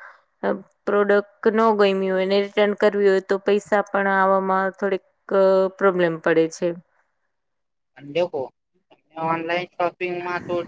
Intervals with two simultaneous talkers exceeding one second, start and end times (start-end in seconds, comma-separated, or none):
none